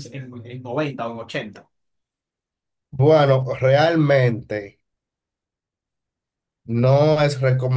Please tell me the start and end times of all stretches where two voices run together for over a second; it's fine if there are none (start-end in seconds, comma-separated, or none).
none